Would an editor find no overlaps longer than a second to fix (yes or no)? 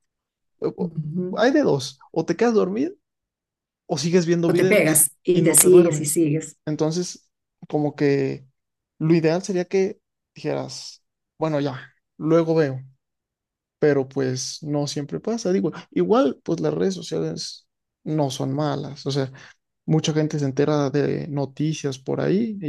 no